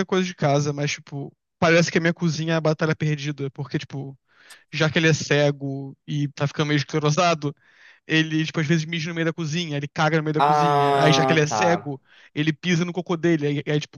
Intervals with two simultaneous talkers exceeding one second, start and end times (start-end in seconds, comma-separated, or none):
10.4-12.0